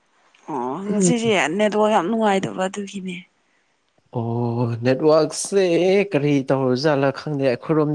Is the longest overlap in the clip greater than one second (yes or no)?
no